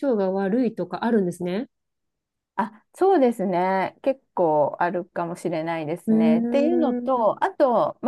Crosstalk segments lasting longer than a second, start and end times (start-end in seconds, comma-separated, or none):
6.1-7.4